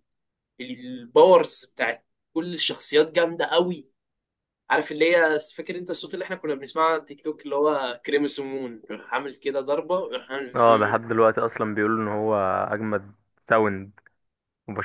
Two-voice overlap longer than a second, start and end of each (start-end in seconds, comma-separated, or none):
none